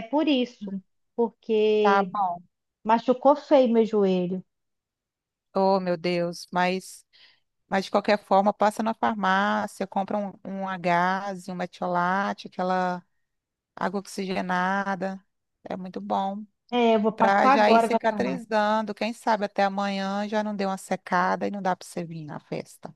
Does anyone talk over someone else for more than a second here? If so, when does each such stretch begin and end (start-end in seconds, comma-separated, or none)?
17.1-18.5